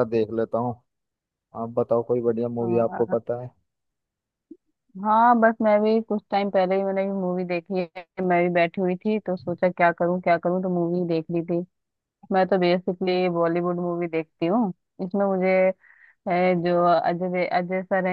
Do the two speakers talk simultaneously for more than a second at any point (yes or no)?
no